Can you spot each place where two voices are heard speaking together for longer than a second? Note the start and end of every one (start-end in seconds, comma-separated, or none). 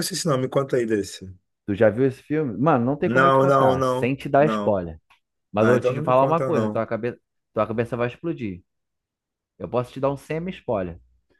3.0-4.8, 5.6-6.8